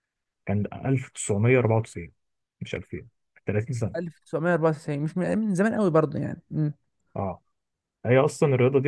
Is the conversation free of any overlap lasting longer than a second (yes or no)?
yes